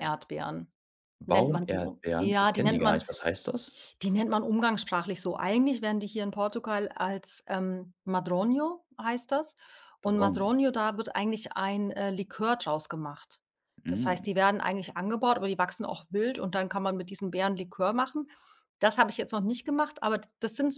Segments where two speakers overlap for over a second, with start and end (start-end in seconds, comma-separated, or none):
1.3-3.0